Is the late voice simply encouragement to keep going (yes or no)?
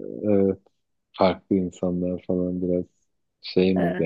no